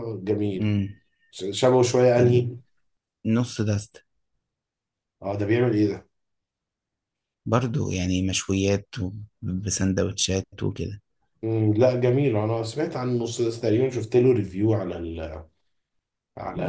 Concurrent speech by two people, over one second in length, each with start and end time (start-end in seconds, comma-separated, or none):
none